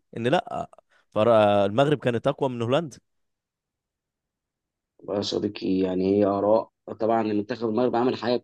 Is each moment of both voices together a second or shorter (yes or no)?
yes